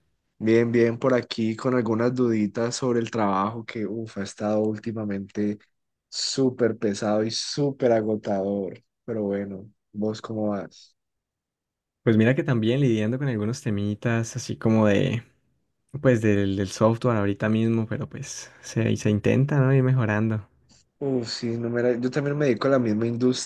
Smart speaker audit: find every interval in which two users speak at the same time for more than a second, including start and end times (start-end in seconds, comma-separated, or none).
none